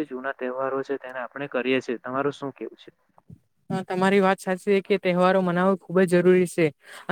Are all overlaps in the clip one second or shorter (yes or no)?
yes